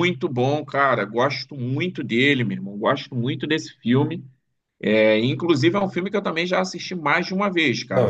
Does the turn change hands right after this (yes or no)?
yes